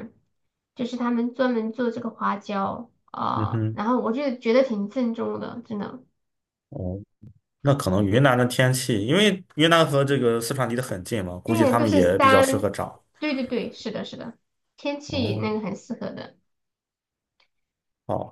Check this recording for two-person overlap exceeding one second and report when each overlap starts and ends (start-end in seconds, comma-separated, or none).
11.4-12.7